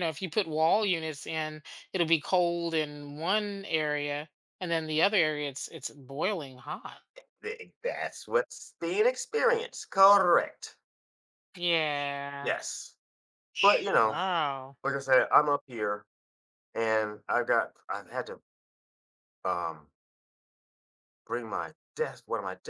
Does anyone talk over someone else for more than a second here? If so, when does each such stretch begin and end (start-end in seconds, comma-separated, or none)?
none